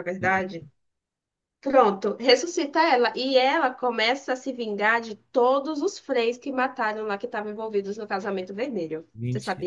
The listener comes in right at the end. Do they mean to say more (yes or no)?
yes